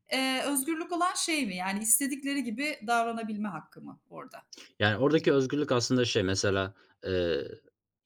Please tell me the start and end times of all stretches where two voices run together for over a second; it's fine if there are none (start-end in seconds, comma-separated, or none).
none